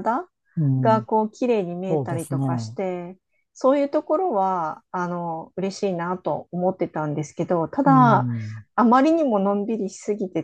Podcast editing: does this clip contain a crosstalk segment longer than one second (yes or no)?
no